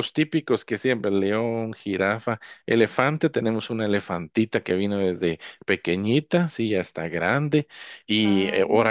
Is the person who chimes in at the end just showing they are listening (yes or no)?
yes